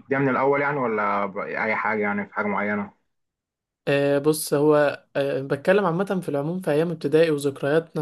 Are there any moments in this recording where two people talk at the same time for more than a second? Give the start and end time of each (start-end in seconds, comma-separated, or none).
none